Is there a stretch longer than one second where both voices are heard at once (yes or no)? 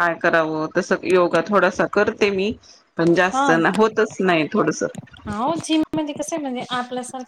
no